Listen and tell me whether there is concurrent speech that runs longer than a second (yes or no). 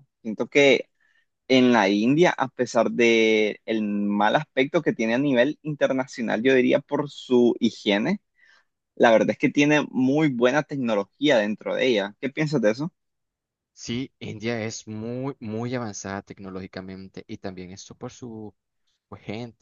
no